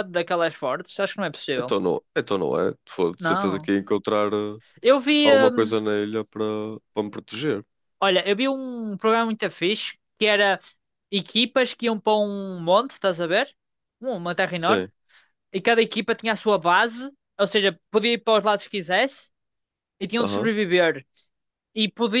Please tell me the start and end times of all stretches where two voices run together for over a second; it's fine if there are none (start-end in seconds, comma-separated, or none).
none